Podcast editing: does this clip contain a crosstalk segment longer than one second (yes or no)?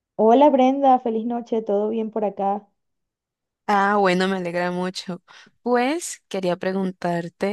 no